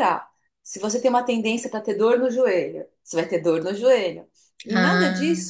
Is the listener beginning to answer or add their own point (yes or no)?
no